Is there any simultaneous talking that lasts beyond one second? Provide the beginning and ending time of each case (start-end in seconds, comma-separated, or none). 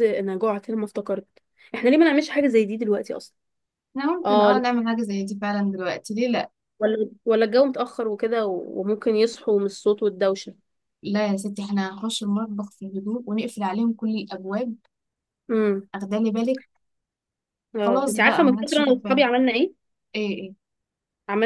17.8-19.2